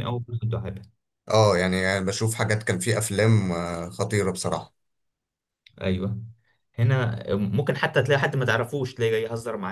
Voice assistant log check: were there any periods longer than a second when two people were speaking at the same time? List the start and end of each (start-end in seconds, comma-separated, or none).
none